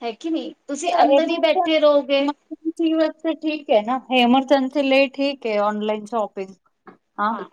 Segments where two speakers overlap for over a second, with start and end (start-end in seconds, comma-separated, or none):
1.0-2.3